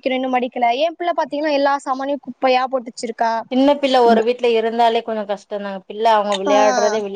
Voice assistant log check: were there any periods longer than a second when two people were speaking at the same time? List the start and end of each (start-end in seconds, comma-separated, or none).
none